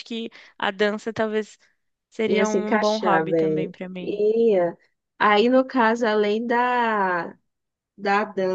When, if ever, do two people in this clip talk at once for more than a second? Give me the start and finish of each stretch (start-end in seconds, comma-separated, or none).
2.3-4.2